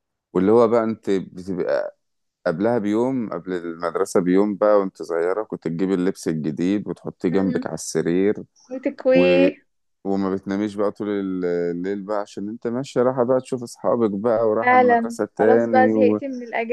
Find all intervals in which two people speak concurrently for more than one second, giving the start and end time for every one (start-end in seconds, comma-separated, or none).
14.6-16.2